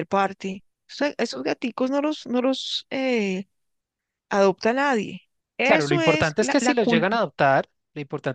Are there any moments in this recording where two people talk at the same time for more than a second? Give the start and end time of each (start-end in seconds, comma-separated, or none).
5.6-7.1